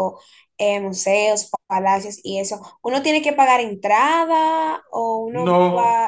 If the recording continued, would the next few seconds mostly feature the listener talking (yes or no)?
yes